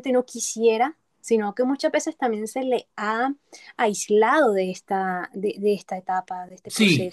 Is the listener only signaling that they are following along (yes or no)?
no